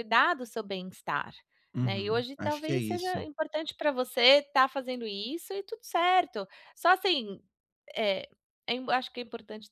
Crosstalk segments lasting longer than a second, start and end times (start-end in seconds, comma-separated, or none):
1.8-3.3